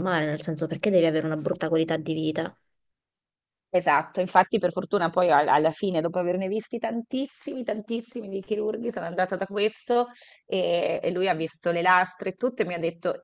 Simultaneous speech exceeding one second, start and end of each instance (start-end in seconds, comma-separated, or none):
none